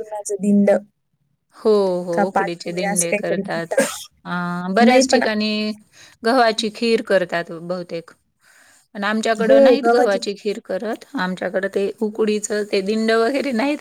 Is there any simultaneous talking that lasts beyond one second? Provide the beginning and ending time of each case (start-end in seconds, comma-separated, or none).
2.2-3.8